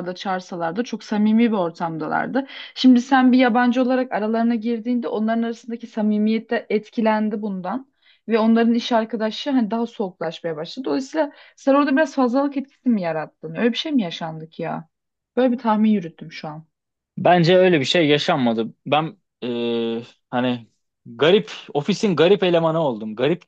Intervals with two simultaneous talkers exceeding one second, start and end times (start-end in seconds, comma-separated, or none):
none